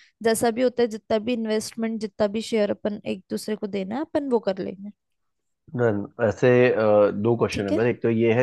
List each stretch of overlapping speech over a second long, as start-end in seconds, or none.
none